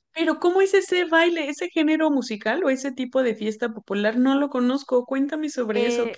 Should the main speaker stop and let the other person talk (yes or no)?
yes